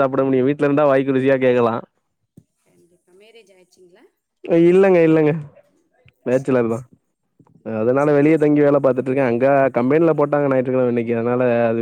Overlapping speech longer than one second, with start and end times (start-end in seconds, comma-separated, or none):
none